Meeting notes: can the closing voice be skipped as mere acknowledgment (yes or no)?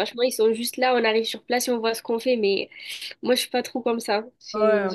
no